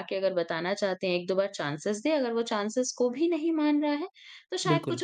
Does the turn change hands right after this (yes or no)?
no